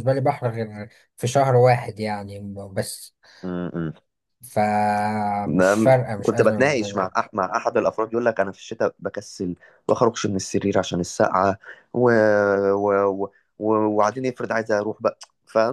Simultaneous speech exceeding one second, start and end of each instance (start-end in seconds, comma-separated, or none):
5.5-7.1